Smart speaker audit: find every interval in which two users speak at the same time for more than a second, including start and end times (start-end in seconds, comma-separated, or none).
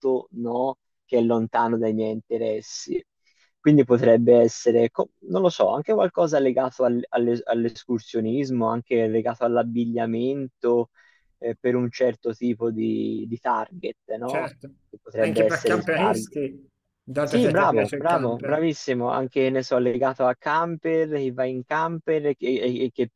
15.2-16.4, 17.2-18.6